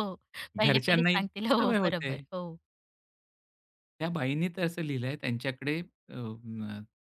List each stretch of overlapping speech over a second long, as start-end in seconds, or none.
0.6-2.1